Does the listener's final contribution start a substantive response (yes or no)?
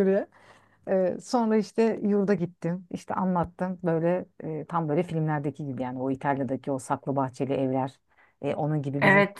yes